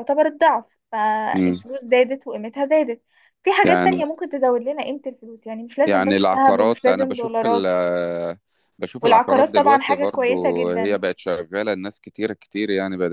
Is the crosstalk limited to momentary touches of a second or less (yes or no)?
no